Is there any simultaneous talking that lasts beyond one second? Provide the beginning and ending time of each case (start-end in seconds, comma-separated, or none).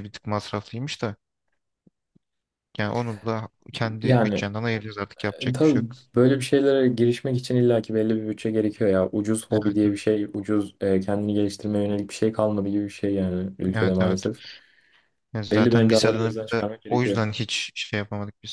15.5-17.2